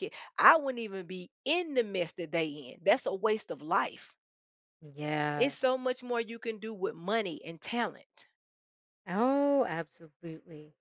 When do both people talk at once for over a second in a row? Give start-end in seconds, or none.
none